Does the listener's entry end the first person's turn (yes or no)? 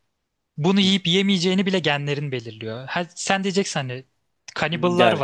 no